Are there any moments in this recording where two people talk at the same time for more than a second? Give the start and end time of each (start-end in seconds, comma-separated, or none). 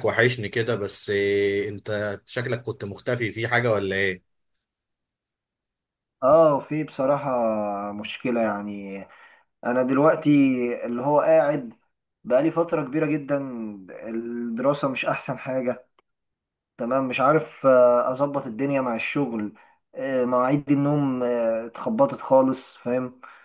none